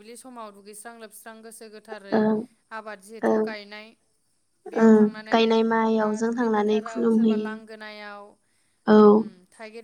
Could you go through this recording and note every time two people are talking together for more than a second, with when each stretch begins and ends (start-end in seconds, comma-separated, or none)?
4.8-7.5